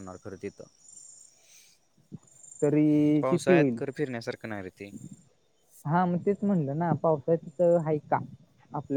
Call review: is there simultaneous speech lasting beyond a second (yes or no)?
no